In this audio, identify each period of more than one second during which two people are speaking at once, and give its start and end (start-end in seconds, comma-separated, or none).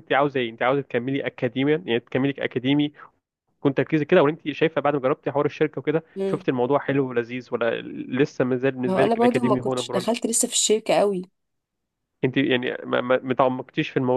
8.9-10.1